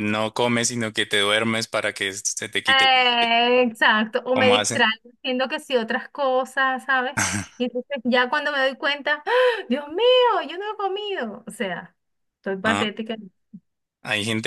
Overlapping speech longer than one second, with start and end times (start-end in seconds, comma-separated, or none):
none